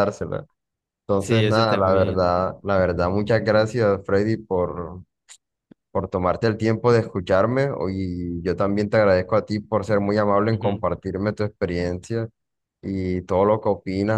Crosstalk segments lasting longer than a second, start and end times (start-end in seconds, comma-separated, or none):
1.1-2.4